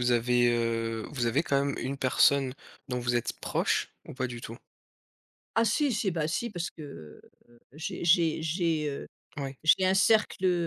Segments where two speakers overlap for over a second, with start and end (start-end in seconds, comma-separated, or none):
none